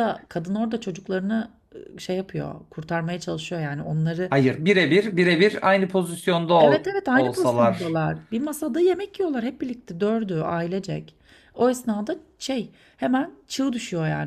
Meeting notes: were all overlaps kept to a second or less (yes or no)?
no